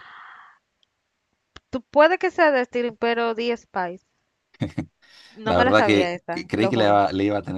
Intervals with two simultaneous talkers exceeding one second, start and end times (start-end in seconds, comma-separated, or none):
5.4-7.1